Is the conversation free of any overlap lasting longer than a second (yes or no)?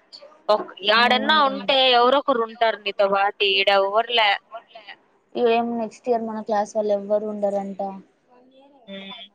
no